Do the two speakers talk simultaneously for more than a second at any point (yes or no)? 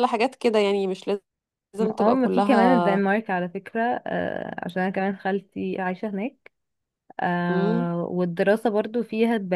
yes